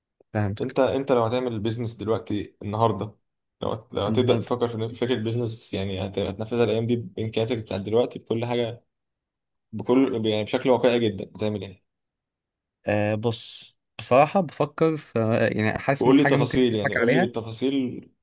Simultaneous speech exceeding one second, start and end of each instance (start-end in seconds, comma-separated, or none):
16.0-17.3